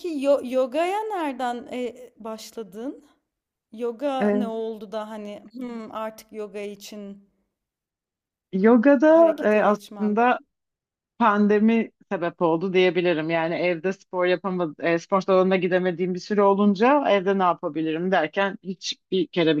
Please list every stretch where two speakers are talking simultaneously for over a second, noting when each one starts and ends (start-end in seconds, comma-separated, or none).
9.1-10.4